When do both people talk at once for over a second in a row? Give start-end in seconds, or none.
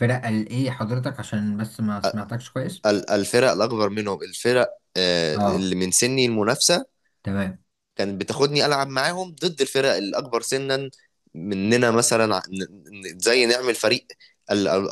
none